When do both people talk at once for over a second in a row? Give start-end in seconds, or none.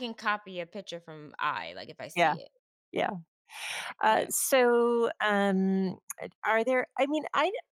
none